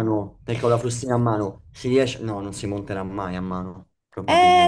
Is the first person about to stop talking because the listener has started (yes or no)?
yes